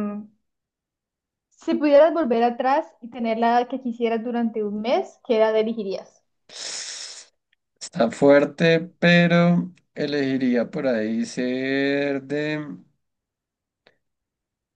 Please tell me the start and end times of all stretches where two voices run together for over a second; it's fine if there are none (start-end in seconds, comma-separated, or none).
none